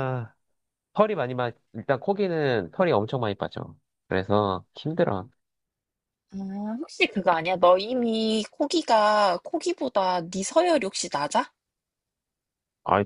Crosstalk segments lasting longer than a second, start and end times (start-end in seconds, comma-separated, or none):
none